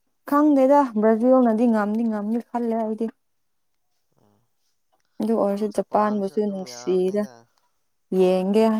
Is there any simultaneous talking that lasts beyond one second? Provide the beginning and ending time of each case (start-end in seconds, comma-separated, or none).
5.7-7.2